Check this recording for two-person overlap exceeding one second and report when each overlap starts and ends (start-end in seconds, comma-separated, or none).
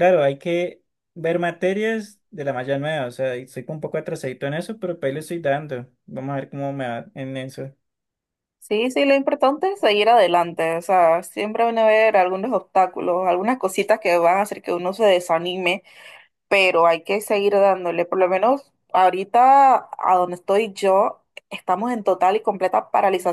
none